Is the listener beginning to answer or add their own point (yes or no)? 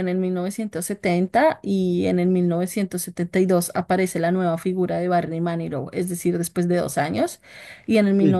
no